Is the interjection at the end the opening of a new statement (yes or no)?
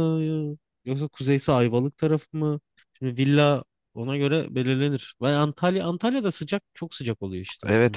yes